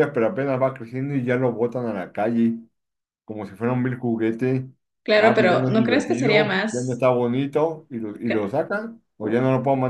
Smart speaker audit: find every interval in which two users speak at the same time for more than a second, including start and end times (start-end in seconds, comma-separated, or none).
5.2-7.1